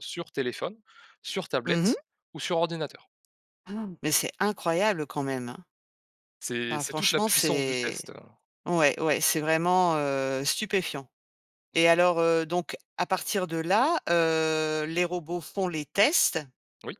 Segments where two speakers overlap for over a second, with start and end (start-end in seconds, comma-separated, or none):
6.7-8.0